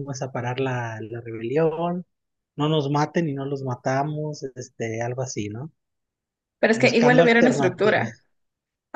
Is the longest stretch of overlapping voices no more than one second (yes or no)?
no